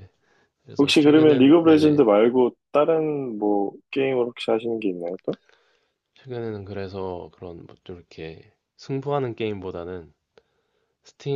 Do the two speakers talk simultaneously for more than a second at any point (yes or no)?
yes